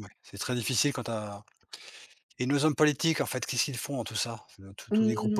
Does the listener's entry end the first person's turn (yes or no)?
yes